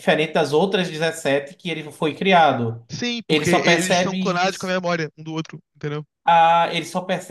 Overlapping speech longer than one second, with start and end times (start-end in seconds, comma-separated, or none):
3.3-4.7